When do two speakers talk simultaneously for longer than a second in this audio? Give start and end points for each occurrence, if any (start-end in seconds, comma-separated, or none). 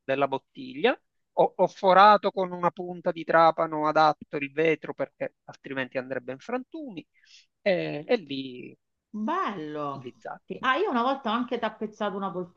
none